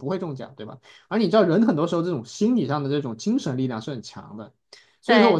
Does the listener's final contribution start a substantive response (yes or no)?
no